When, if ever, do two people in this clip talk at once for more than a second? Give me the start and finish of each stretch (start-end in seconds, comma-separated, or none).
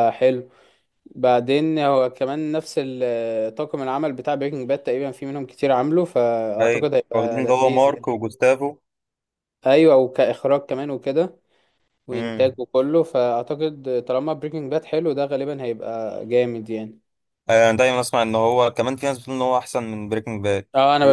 6.6-8.1